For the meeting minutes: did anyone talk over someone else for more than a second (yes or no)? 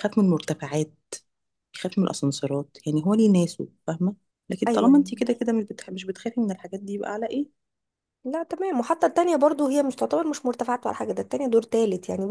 no